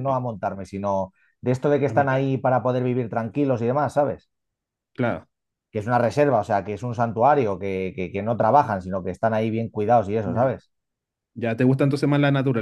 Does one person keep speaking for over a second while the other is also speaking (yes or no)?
no